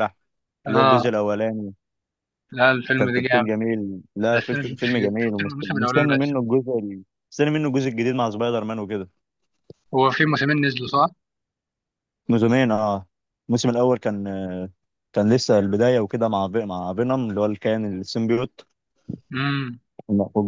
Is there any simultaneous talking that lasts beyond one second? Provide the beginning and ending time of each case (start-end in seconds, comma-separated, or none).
4.3-6.3